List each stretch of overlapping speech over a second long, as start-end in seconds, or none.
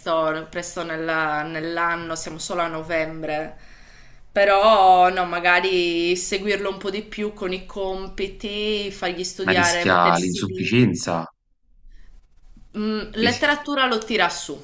9.5-11.0